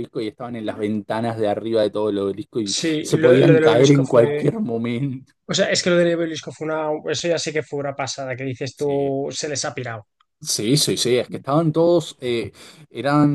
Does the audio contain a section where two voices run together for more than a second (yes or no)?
yes